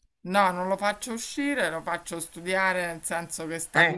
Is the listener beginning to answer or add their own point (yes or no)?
no